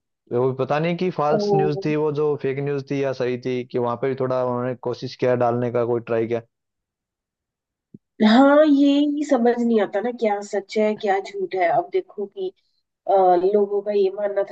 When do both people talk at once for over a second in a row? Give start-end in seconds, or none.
none